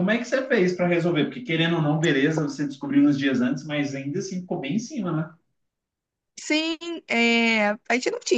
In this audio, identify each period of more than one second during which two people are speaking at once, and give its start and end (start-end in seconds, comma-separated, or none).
none